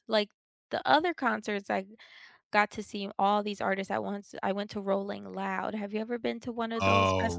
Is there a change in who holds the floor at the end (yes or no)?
yes